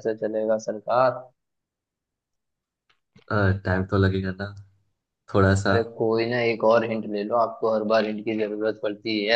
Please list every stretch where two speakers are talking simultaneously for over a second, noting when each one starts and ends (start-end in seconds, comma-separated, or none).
none